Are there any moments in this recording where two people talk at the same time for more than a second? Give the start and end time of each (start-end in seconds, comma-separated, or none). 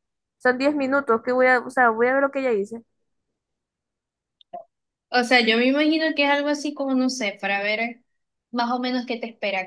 none